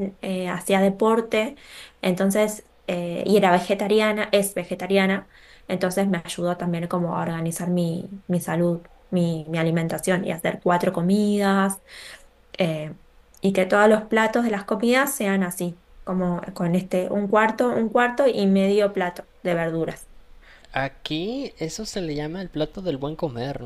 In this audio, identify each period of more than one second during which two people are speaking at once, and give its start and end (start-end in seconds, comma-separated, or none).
none